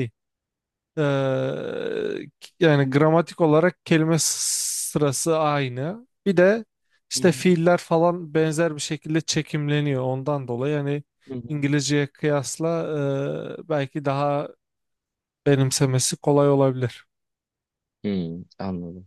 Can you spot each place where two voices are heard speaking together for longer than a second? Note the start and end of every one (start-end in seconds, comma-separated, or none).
none